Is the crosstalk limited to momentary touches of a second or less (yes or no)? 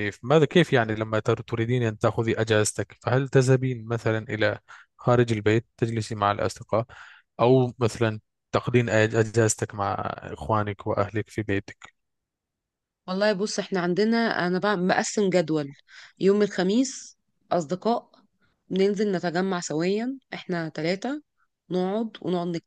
yes